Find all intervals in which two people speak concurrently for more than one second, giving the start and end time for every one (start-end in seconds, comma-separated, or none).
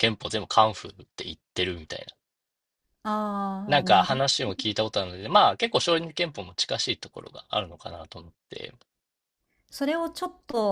none